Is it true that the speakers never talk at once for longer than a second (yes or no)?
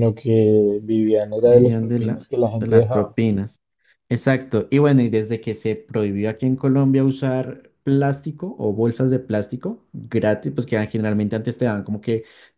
no